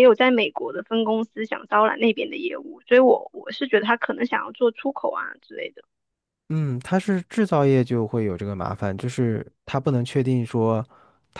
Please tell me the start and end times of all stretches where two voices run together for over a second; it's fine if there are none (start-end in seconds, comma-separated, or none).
none